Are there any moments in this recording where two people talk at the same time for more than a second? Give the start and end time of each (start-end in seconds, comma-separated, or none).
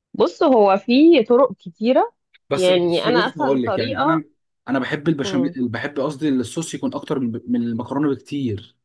2.5-4.2